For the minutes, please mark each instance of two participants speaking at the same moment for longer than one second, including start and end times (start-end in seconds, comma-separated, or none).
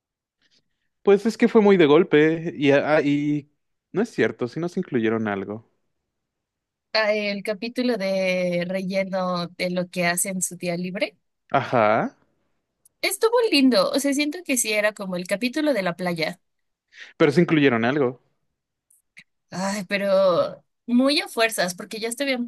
none